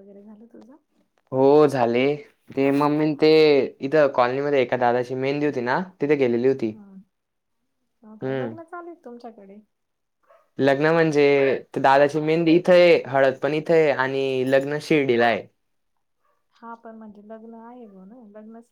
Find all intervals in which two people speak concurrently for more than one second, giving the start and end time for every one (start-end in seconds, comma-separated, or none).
none